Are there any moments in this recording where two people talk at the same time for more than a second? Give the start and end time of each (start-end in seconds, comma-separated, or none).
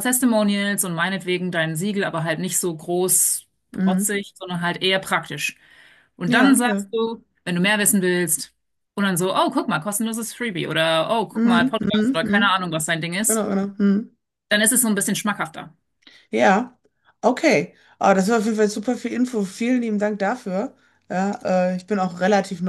11.3-12.6